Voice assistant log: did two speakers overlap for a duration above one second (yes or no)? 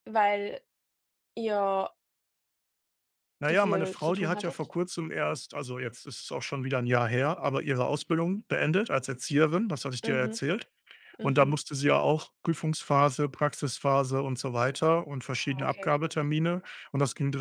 yes